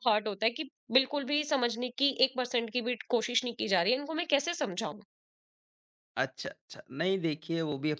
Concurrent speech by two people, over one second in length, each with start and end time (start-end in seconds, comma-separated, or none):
none